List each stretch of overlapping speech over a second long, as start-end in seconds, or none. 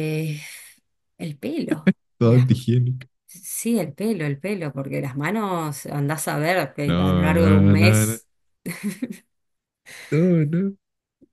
6.8-8.2